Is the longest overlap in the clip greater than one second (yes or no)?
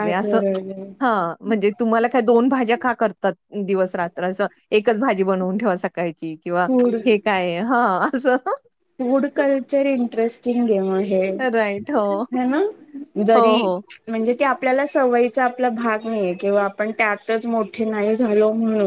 no